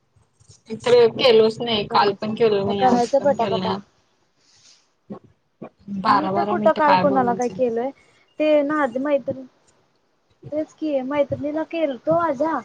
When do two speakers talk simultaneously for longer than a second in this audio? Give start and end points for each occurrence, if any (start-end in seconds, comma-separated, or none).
1.6-3.7